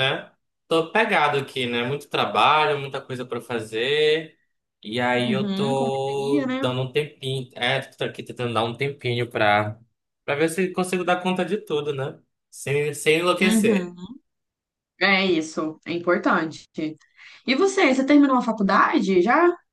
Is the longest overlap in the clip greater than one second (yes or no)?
yes